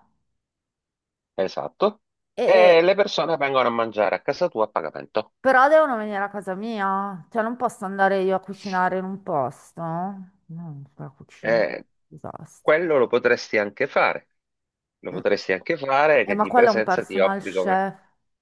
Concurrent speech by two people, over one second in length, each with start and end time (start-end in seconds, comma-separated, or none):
16.2-17.9